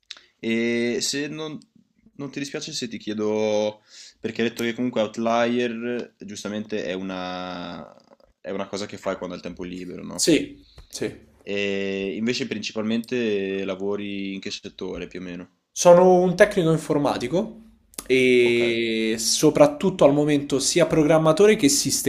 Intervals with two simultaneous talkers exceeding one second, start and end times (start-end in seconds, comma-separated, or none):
none